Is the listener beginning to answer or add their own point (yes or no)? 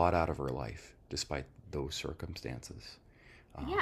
yes